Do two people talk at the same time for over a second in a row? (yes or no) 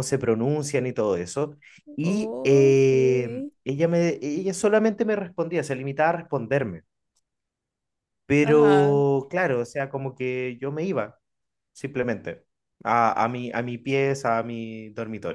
yes